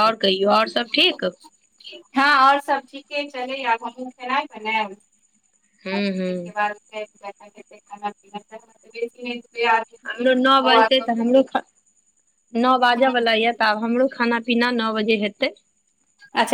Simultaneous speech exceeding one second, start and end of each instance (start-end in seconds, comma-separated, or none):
none